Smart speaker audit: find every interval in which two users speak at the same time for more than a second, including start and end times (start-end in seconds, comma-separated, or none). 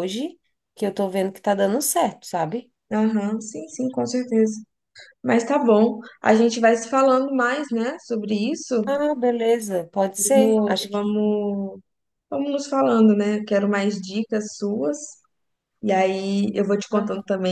10.2-11.4